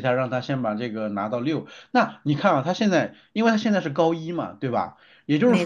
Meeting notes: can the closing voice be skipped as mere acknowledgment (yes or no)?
yes